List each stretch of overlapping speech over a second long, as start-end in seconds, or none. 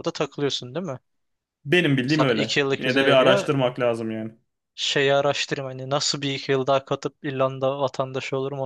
2.1-3.5